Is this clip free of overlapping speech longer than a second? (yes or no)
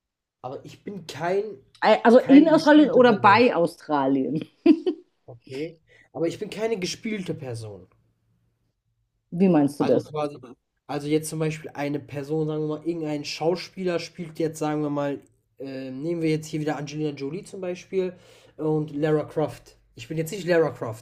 no